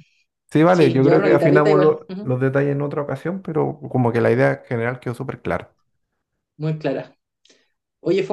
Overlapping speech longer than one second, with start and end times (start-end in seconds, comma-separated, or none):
0.7-2.3